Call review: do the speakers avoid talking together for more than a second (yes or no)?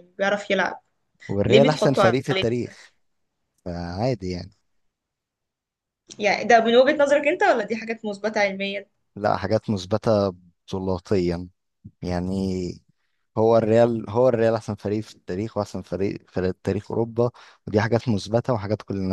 no